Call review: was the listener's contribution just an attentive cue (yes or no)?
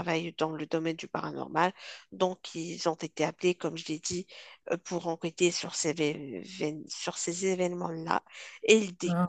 yes